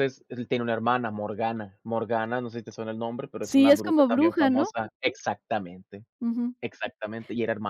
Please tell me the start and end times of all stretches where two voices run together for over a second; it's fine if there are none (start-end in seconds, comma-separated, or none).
3.4-4.7